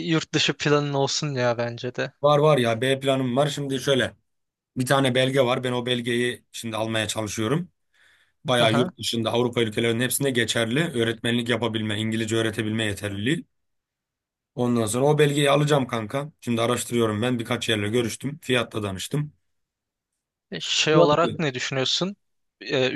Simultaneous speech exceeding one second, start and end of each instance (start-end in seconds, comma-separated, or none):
none